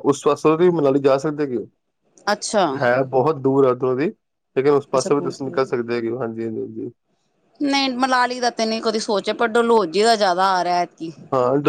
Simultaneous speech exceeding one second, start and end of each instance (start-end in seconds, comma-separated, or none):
none